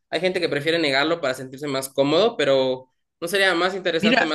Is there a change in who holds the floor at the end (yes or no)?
yes